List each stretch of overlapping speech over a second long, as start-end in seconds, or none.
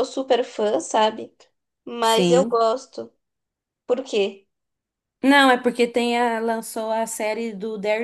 none